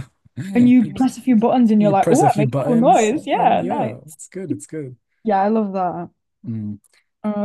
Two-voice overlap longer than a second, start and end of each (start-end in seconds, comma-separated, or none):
1.8-4.2